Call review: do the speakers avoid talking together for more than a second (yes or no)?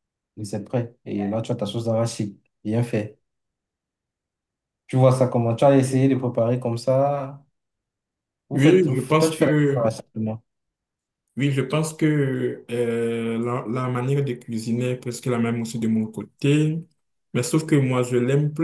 no